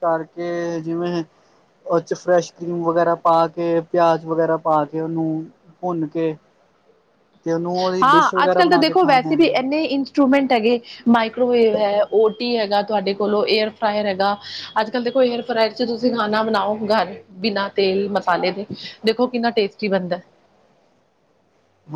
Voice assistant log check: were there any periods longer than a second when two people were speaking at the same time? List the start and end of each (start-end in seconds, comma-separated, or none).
8.0-9.5